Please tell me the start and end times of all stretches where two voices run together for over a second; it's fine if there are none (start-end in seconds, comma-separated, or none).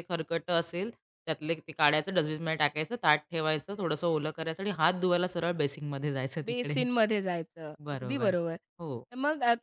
none